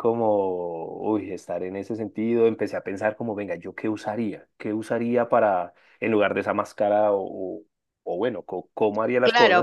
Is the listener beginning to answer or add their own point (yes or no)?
yes